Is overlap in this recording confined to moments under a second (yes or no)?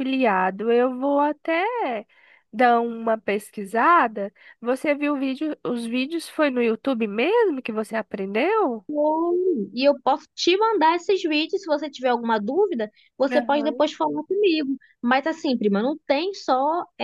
yes